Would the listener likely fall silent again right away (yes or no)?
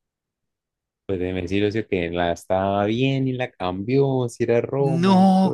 no